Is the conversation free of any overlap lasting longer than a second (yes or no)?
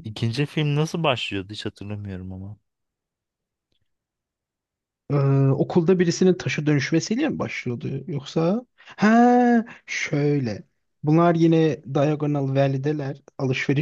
yes